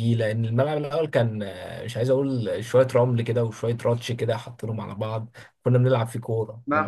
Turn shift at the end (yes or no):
yes